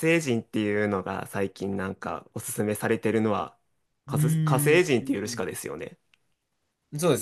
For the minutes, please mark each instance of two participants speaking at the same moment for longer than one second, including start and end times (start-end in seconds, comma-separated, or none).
4.1-5.5